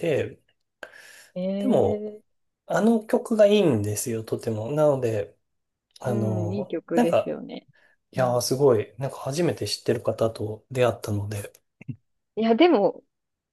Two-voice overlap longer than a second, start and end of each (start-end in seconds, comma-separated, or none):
6.1-7.4